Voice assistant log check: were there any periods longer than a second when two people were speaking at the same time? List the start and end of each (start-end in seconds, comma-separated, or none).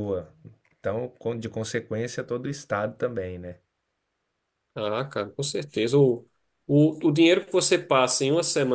none